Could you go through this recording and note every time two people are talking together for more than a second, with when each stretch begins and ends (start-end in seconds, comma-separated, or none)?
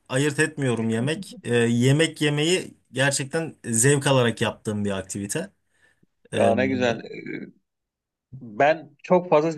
none